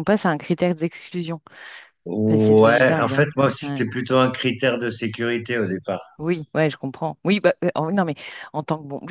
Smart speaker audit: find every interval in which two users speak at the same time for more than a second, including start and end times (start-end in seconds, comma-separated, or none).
2.3-3.9